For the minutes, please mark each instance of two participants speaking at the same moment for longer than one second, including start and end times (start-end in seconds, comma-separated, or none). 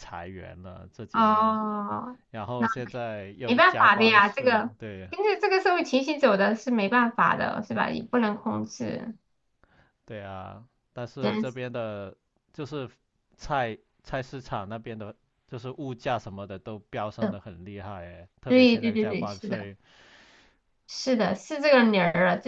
3.5-4.7, 18.5-19.7